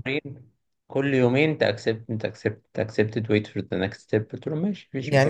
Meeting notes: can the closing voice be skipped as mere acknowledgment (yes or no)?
no